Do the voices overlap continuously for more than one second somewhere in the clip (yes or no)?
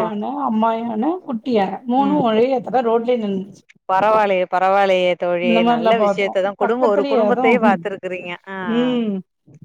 yes